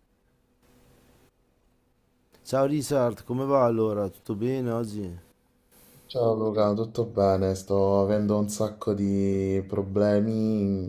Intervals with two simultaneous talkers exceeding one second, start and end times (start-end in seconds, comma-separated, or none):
none